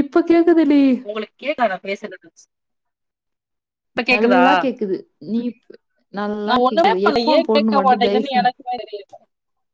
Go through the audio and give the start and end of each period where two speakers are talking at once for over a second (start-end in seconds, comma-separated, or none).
6.5-8.5